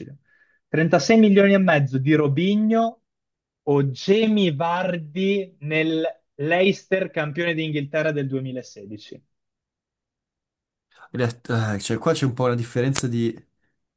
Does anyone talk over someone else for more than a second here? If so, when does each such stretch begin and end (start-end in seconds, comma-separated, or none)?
none